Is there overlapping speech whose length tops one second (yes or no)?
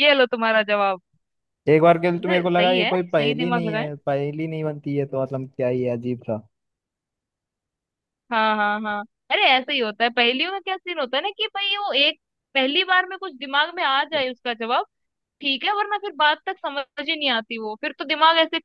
yes